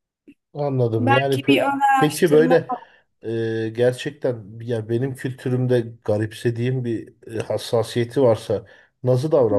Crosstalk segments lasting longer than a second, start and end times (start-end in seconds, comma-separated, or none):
1.0-2.7